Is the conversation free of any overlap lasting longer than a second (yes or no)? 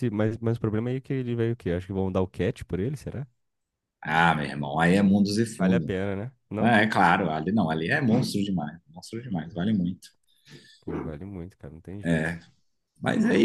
yes